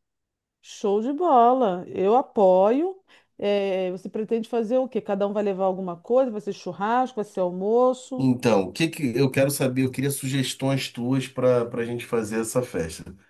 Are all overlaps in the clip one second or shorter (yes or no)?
yes